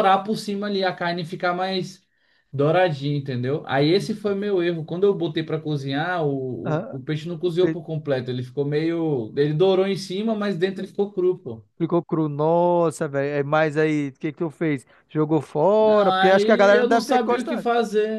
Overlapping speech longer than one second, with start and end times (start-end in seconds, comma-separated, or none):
15.8-17.7